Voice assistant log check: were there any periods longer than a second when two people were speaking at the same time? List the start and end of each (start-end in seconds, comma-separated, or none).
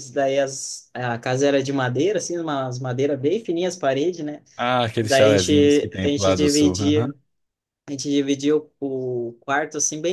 5.0-7.1